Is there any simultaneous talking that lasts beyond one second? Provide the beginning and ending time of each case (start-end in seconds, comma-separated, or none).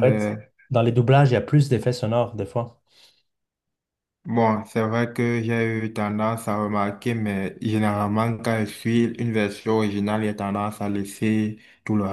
none